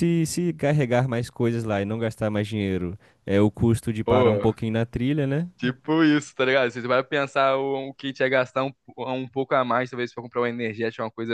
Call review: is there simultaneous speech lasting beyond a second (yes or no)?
no